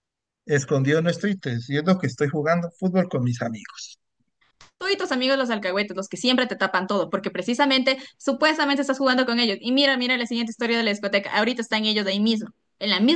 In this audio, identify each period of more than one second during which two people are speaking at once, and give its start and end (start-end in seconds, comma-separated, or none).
none